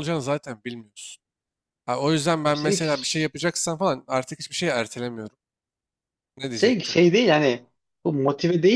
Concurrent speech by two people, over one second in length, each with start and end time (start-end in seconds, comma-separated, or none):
none